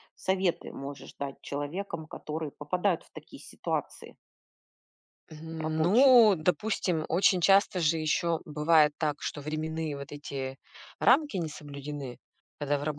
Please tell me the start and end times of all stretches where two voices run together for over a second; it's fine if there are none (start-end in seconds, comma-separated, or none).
none